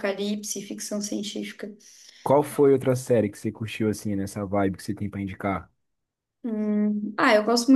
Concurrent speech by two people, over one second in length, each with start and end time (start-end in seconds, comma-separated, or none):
none